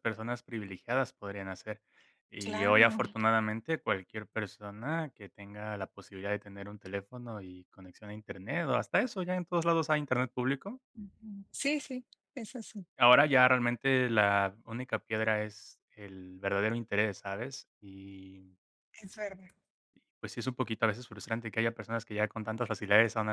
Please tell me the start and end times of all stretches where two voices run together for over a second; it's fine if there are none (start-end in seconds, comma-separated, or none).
none